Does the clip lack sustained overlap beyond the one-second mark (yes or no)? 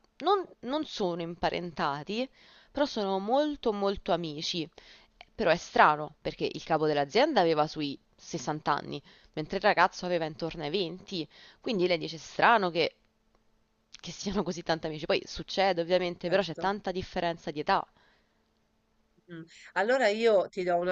yes